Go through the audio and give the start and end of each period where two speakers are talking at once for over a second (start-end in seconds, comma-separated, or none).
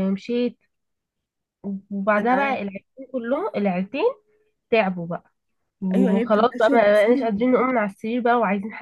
5.9-7.4